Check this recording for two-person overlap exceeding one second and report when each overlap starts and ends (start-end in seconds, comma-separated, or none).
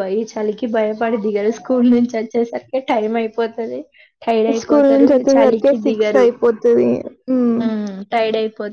4.6-6.3